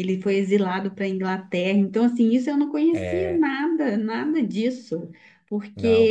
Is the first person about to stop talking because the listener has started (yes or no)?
no